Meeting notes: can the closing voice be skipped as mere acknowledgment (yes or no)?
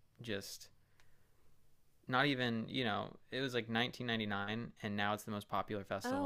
no